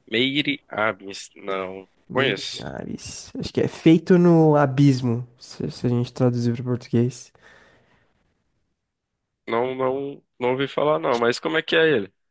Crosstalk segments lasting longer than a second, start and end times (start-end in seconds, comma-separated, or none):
none